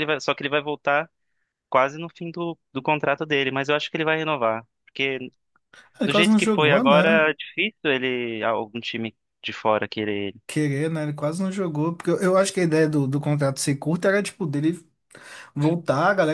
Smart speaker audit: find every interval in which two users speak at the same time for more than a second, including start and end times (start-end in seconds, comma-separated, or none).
6.0-7.2